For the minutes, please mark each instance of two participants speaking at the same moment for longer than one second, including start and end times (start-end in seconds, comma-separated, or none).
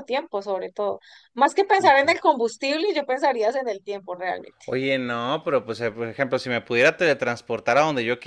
none